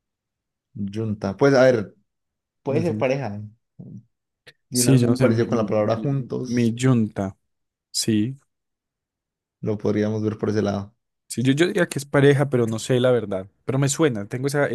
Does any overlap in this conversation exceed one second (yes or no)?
yes